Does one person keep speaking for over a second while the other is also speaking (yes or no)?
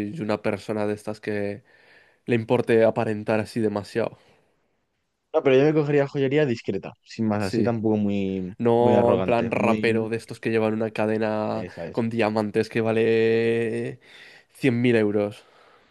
yes